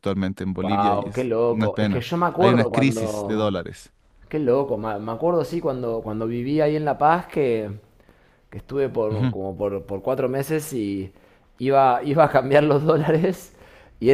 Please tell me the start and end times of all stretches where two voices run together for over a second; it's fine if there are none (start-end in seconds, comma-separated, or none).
0.6-3.6